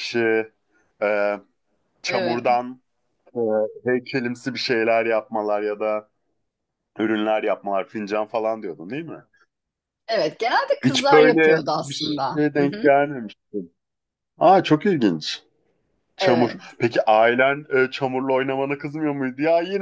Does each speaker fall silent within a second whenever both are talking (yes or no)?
no